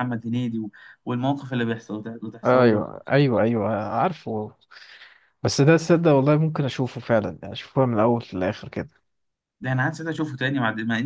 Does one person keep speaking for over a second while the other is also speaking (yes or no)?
no